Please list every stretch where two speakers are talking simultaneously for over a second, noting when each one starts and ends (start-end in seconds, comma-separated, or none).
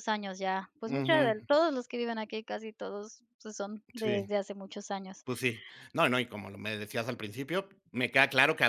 none